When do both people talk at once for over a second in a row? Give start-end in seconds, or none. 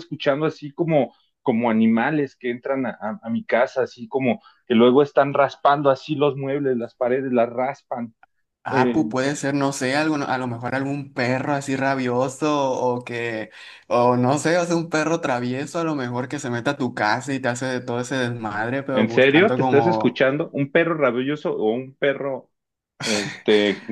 18.9-20.2